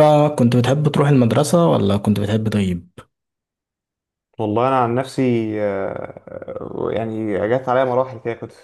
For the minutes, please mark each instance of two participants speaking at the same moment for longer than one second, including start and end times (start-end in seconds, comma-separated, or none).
none